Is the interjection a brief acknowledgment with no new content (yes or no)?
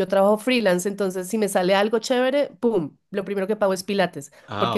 yes